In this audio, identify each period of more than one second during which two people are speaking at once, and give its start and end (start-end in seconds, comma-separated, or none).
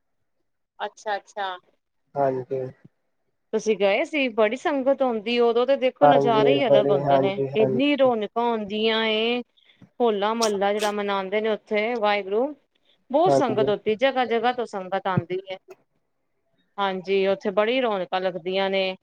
6.0-7.8